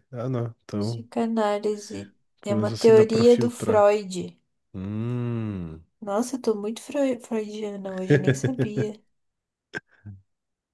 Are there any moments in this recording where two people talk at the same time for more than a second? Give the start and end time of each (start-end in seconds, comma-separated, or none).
2.5-3.9